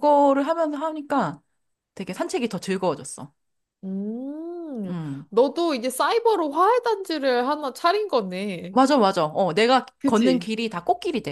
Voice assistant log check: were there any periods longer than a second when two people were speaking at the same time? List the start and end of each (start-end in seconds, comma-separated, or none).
none